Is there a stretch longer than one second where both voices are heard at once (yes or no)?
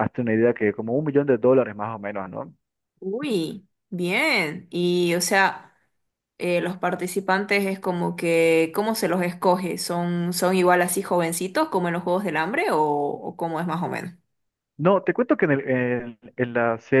no